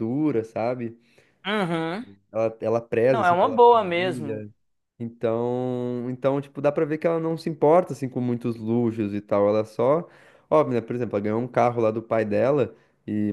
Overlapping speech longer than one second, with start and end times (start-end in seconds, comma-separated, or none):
3.1-4.4